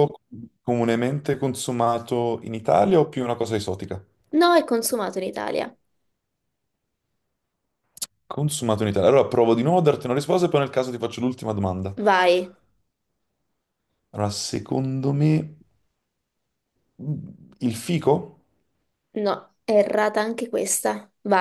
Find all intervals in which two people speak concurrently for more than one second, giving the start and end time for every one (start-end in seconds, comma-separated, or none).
none